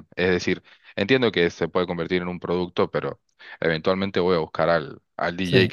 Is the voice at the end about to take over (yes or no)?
yes